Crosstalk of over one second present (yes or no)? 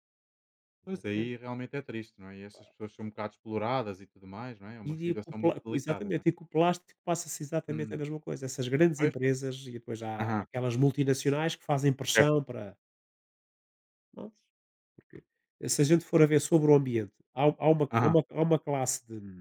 yes